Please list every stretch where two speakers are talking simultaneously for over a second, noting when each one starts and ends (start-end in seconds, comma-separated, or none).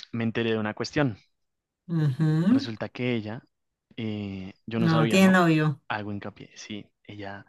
none